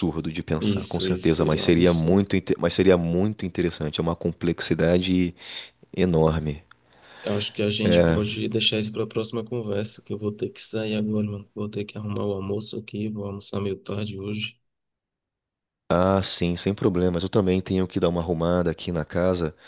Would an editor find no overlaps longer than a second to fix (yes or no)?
no